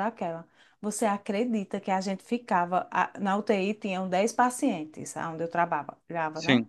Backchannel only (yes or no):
yes